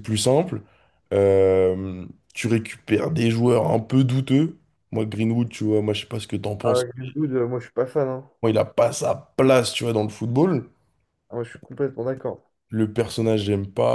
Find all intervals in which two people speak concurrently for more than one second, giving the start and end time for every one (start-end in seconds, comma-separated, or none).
none